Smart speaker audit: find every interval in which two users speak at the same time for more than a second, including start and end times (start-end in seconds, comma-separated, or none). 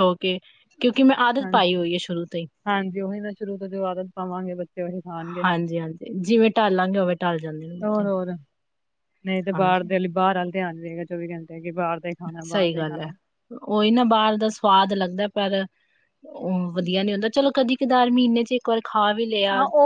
none